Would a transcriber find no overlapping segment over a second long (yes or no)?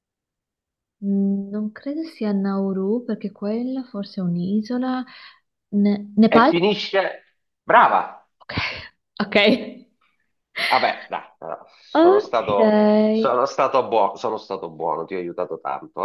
no